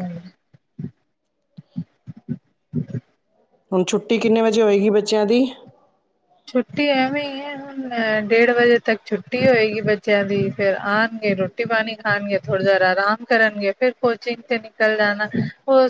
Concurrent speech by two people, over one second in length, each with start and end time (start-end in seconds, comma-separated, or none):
none